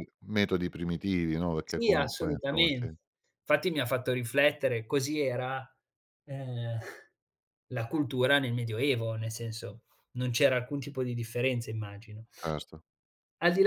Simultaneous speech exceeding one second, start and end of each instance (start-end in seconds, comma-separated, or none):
1.6-2.9